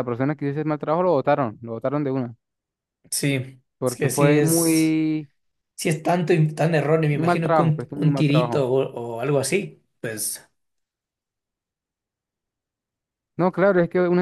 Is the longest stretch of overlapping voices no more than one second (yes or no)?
no